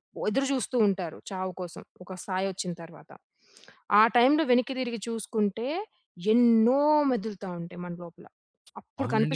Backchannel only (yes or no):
no